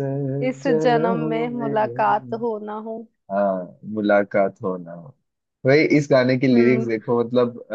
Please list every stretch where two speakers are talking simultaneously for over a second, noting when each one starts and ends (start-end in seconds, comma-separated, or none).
0.6-2.4